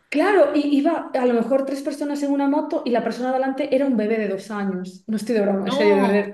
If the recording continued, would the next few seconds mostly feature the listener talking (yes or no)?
no